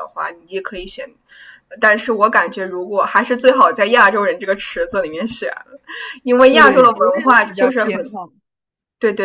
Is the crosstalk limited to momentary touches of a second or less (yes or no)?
no